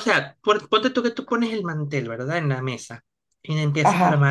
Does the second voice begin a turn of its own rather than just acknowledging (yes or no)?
no